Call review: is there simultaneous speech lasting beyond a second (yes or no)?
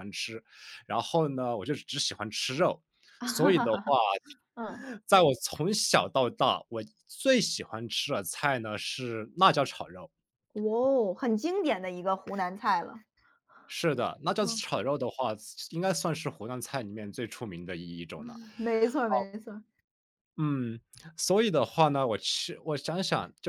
no